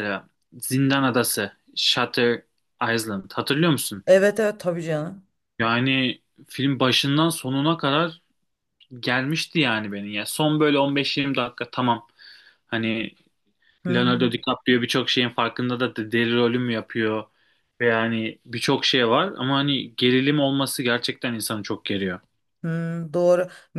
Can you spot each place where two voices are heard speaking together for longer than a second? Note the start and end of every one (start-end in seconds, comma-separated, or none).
none